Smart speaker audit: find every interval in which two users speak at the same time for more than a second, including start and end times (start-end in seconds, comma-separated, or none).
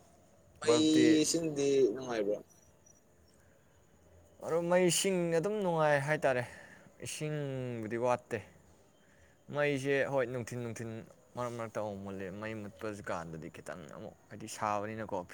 none